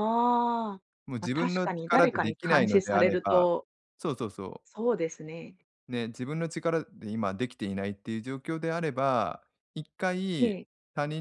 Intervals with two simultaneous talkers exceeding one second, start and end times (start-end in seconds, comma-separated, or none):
1.2-3.5